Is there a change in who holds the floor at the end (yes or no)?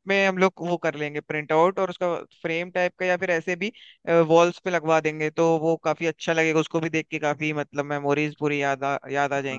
yes